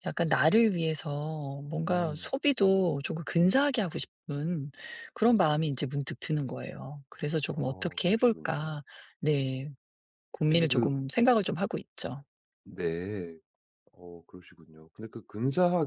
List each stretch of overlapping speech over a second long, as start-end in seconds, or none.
7.5-8.7